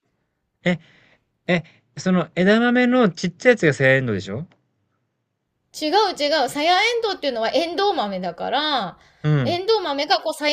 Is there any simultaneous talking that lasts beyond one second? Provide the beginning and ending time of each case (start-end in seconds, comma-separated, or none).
none